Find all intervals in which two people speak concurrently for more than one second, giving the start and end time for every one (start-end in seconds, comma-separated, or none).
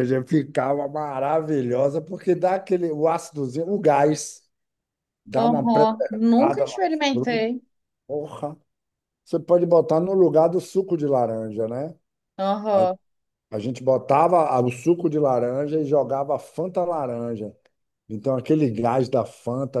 5.3-7.4